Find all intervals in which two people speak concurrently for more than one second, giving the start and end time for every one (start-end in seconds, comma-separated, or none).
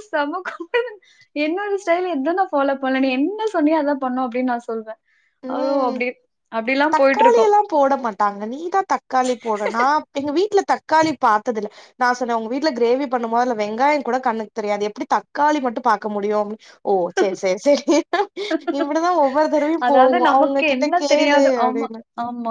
19.9-21.9